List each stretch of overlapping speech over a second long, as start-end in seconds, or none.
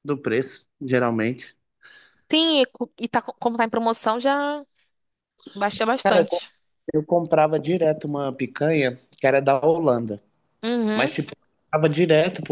none